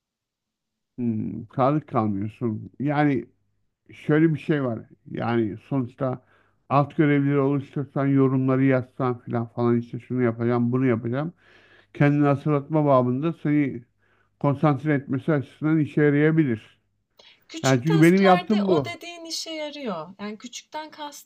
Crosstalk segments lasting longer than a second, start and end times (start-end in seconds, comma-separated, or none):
17.6-19.0